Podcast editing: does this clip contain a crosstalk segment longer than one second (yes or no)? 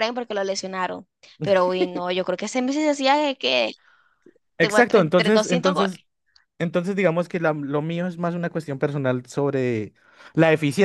yes